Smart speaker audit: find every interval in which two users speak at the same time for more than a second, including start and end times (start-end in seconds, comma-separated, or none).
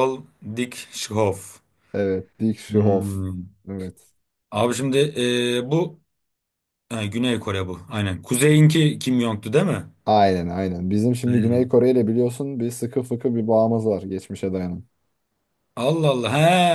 none